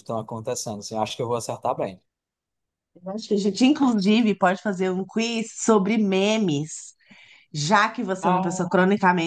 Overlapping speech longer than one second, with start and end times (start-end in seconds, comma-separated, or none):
none